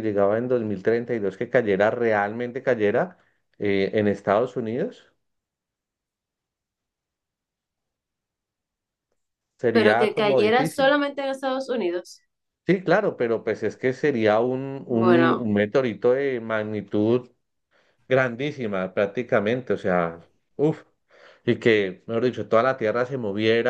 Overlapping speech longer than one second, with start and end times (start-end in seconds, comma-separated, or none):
9.7-10.9